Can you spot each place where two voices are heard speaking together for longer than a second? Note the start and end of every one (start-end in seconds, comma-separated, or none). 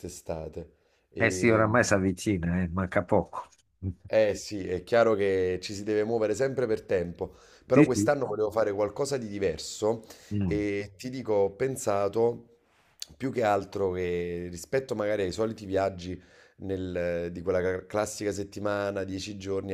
none